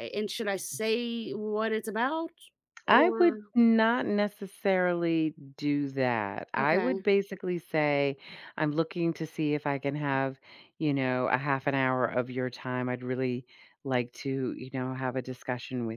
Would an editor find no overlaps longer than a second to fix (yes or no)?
yes